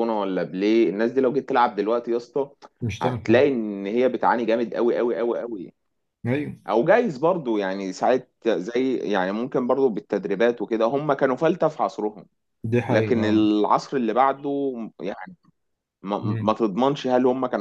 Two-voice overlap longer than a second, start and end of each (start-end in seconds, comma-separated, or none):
none